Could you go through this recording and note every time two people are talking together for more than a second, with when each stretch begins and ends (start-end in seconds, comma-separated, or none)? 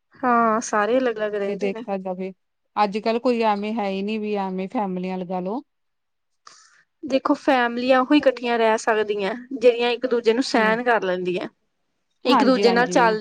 none